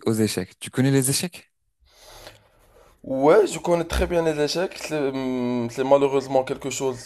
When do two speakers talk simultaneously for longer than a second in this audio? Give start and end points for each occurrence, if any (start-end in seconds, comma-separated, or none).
none